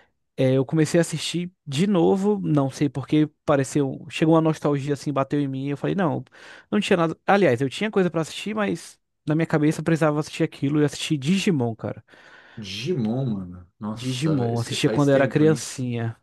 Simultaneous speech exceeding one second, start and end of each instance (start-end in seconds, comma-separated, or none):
13.9-15.7